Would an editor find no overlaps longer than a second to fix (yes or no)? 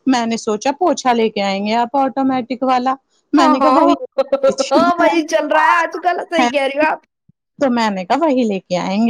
no